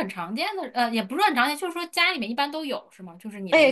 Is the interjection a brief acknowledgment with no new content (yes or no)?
no